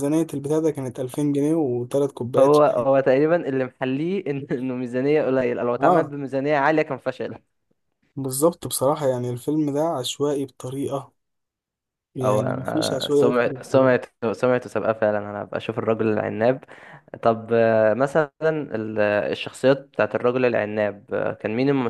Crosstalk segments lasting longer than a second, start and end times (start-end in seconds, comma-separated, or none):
12.2-13.9